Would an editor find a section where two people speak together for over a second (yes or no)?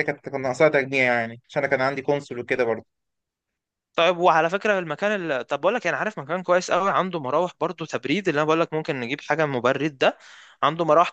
no